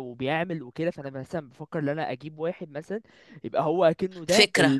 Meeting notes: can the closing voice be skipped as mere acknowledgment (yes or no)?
yes